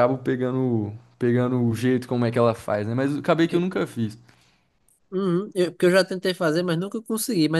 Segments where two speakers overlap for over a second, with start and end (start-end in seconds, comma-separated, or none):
none